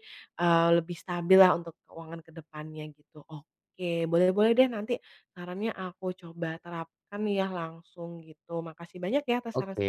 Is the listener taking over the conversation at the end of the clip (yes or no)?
yes